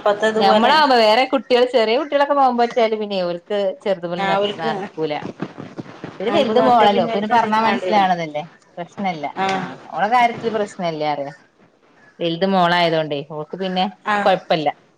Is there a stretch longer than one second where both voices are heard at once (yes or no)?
yes